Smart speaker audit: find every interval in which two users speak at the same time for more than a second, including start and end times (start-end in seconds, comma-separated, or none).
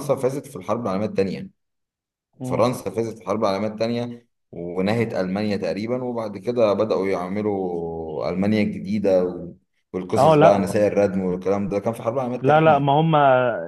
none